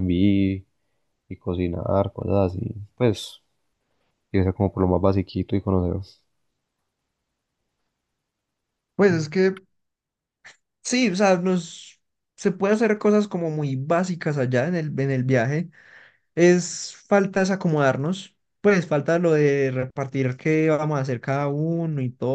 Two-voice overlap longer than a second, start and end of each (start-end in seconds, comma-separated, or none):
none